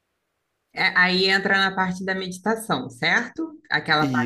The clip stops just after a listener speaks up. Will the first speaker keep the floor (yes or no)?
yes